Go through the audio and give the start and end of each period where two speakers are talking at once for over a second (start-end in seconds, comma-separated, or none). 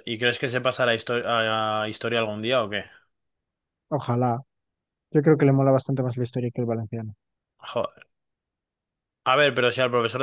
none